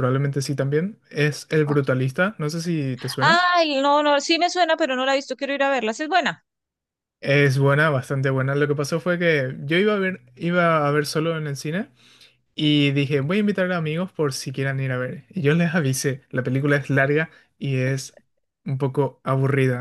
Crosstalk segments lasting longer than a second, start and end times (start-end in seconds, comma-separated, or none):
none